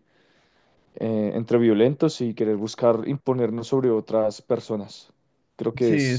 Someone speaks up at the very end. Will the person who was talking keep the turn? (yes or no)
no